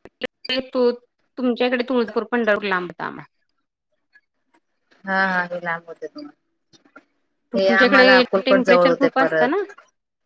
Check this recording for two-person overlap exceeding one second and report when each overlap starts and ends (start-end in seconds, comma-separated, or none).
7.7-9.6